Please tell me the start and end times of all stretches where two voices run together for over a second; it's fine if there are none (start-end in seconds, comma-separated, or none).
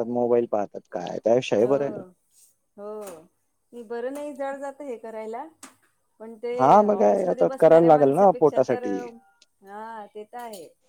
7.0-8.8